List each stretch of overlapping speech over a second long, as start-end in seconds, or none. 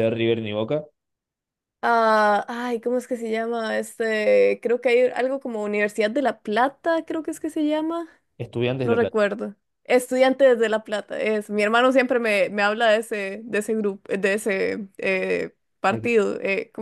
none